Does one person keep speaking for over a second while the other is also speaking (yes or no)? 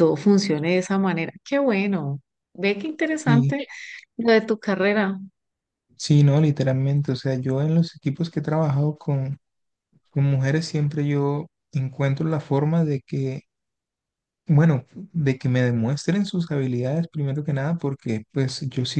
no